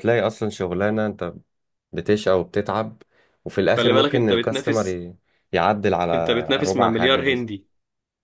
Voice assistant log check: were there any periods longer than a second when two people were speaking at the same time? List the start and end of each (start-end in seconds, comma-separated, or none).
3.7-5.0, 6.1-7.5